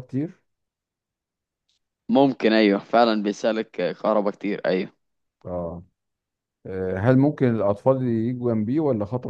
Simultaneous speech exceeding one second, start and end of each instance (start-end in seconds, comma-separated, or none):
none